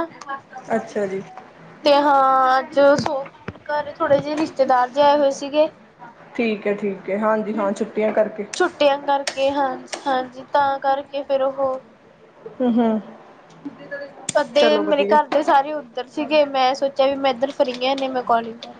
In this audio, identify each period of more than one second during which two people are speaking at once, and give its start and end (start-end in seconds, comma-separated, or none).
none